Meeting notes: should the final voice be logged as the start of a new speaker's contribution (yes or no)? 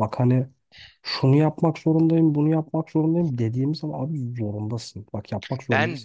no